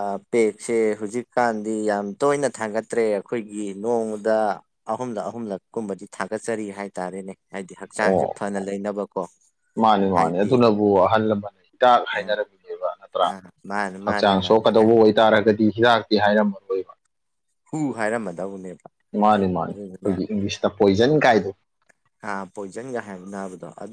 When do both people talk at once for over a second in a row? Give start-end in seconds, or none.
none